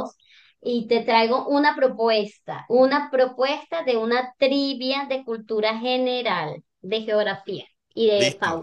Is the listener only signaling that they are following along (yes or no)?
no